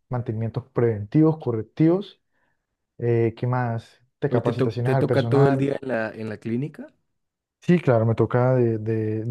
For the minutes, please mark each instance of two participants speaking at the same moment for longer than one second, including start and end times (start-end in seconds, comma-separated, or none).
4.3-5.7